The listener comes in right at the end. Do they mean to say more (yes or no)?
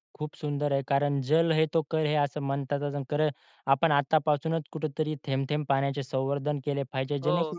no